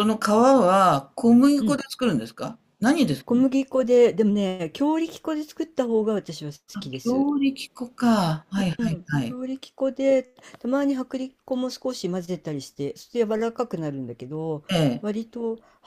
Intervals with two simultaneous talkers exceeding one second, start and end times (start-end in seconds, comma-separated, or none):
none